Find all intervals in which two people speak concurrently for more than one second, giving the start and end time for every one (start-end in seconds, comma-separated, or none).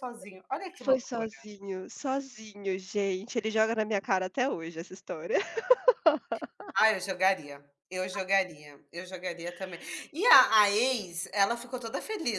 none